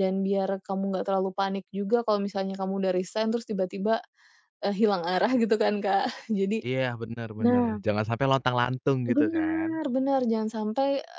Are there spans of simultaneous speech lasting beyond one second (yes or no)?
no